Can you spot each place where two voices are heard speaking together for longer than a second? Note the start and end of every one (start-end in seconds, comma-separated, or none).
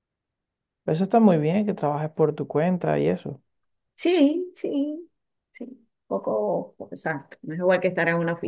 none